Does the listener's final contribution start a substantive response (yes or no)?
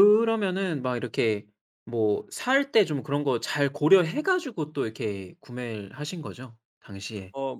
yes